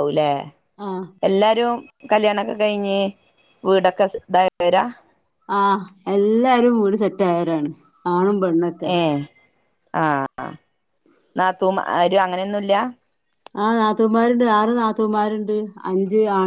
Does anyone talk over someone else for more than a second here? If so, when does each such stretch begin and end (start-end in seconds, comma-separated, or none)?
none